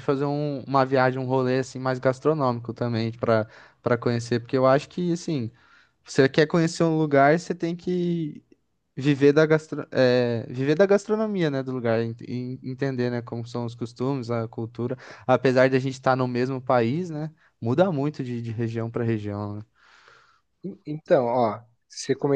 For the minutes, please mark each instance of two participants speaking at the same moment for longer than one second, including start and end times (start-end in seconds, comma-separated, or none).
none